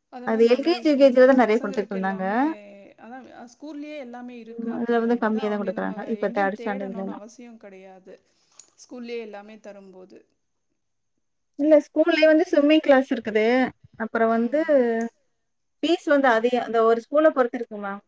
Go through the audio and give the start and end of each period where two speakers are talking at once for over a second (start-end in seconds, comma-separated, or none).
0.6-2.2, 4.8-7.2